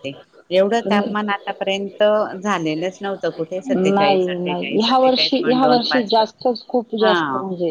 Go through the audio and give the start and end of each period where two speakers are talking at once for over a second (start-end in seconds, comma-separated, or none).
4.0-6.1